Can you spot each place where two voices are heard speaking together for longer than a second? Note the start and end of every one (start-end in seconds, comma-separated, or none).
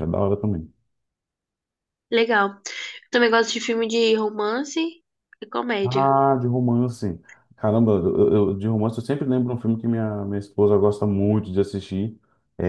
none